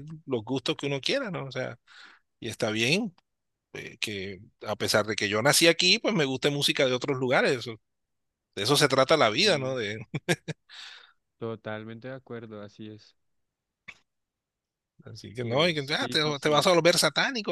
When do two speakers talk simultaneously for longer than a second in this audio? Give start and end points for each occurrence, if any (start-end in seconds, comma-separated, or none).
15.4-16.7